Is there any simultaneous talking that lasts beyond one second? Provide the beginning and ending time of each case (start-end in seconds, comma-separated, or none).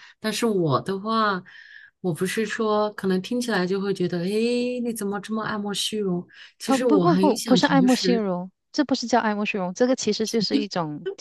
6.7-8.2